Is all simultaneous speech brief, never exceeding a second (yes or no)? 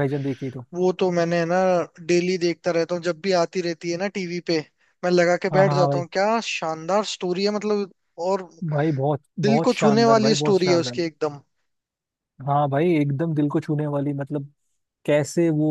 no